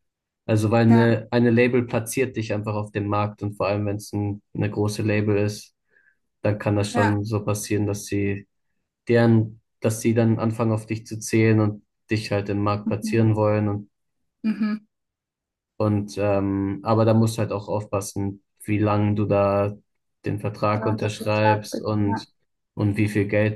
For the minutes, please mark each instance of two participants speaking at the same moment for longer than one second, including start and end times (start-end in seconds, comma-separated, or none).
20.7-22.2